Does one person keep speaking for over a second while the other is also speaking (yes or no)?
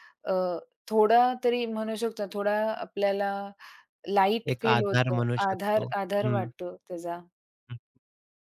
yes